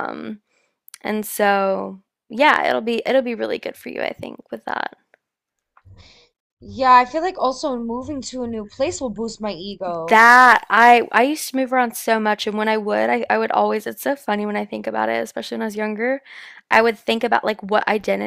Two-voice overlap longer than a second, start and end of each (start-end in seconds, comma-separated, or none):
none